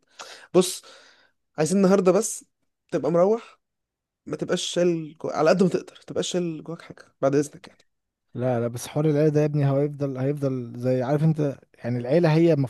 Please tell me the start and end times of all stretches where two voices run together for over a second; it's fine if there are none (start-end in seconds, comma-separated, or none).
none